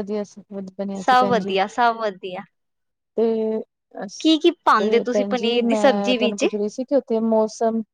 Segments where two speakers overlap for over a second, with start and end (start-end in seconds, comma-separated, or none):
4.8-6.4